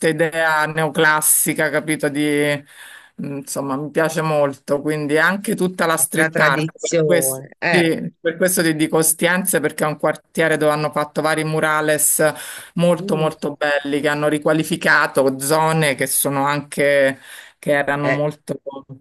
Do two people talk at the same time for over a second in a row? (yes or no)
yes